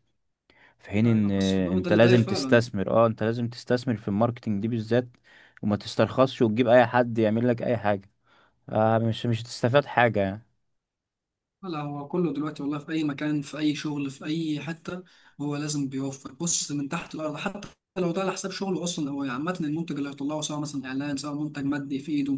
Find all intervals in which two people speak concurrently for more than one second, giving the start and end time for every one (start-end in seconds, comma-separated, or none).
1.0-2.7